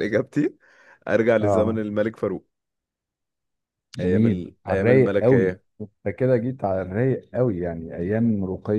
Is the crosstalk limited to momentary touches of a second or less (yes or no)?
no